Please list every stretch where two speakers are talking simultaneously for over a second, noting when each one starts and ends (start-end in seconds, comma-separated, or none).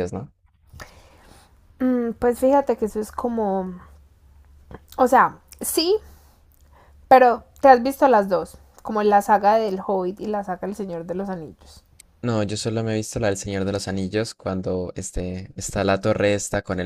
none